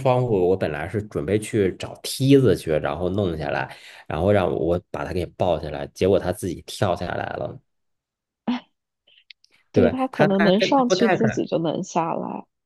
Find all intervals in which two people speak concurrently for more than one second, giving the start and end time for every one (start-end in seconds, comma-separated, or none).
9.7-11.4